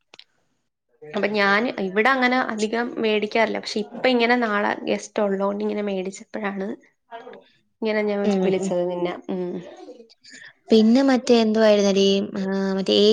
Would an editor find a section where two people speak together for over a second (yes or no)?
no